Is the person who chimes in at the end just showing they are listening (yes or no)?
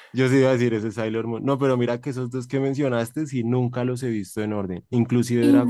yes